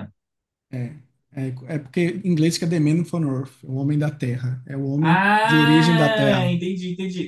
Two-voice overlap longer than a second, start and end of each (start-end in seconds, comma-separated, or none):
5.0-6.5